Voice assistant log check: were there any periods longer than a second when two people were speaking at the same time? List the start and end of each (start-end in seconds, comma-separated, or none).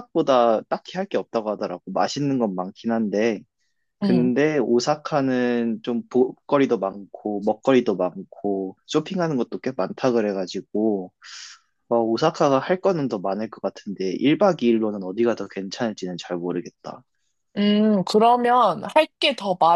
none